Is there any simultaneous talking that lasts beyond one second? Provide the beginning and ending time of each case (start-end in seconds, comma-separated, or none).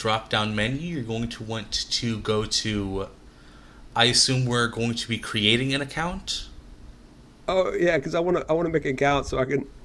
none